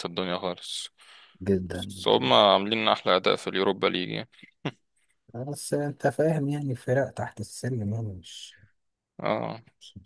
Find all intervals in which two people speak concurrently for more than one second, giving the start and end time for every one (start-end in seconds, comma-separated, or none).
none